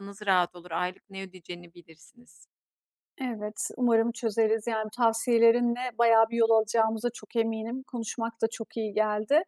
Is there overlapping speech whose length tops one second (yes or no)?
no